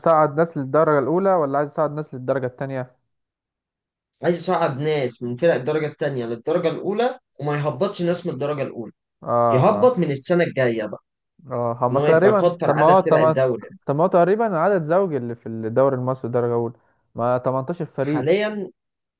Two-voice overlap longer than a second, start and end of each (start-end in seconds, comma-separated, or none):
11.9-13.4